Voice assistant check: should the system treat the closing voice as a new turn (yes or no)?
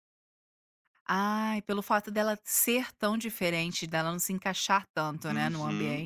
yes